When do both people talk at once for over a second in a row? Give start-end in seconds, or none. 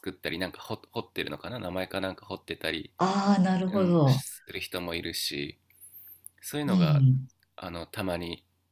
none